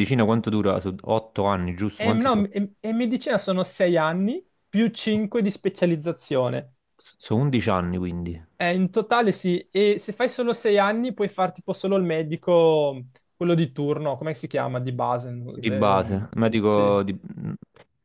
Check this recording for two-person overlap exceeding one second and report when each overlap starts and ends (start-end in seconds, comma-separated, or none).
15.5-16.9